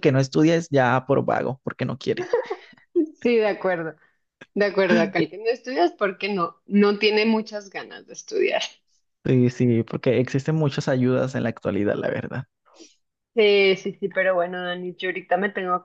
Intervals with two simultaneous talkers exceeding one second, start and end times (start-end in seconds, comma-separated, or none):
none